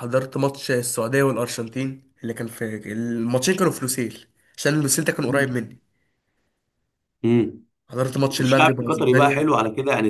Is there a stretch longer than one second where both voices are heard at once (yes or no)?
yes